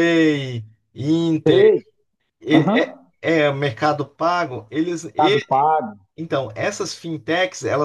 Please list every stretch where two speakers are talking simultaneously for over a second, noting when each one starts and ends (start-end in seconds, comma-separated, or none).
none